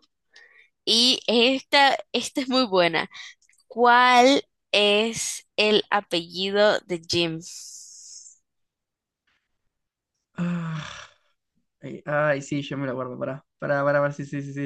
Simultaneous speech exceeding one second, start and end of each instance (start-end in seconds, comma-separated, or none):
none